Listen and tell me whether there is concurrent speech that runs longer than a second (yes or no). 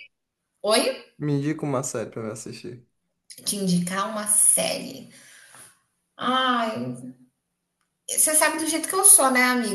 no